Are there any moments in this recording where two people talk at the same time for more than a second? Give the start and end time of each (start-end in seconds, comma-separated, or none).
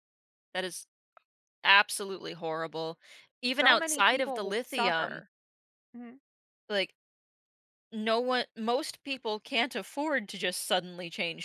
3.6-5.2